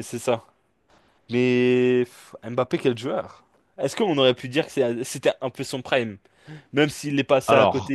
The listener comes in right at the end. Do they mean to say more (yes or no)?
no